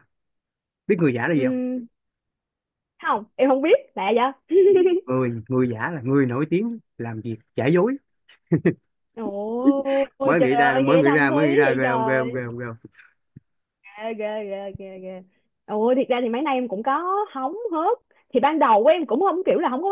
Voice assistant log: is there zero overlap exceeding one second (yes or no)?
no